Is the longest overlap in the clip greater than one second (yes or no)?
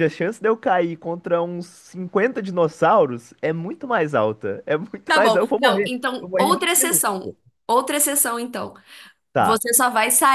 yes